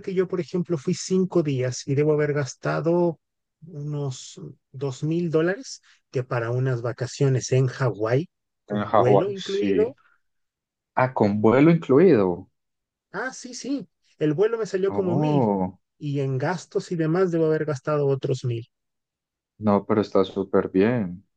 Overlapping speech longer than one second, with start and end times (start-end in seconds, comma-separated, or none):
8.7-9.9